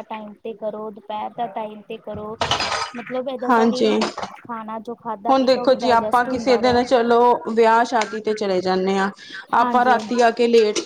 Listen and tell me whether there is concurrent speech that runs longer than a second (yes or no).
yes